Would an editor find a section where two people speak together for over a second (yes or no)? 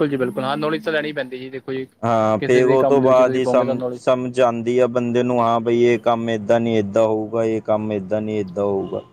yes